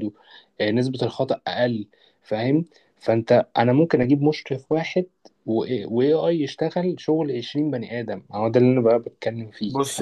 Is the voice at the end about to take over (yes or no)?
yes